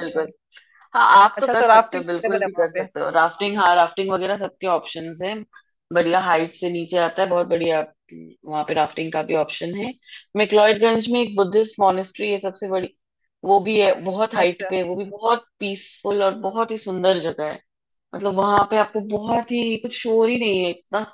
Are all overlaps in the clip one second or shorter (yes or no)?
no